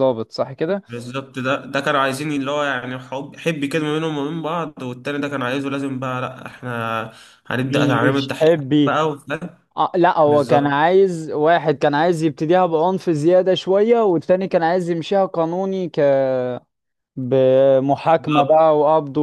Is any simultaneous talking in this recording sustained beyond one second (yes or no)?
yes